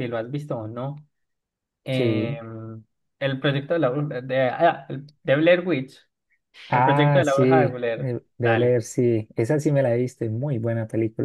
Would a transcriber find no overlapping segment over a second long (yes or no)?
no